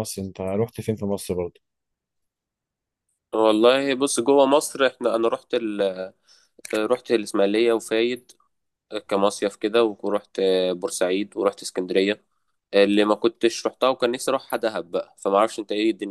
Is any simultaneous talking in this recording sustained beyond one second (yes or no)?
no